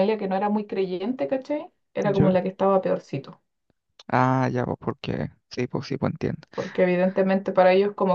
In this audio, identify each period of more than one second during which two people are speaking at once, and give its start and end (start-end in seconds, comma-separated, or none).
none